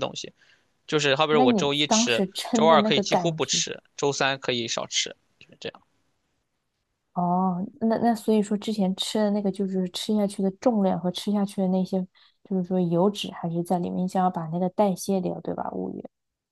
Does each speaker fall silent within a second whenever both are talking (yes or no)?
no